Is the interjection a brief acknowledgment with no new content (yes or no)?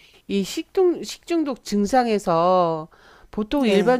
yes